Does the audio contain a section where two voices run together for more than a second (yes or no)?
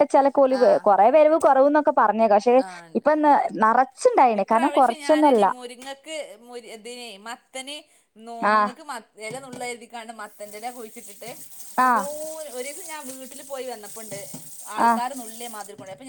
no